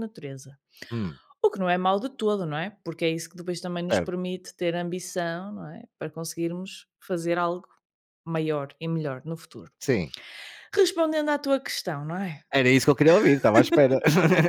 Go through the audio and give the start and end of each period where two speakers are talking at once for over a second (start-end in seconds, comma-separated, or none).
none